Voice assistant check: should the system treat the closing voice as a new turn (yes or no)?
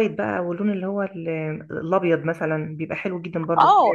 yes